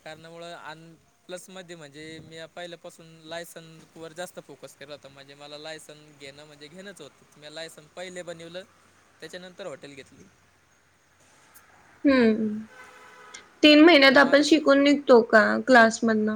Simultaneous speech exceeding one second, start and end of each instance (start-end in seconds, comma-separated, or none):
none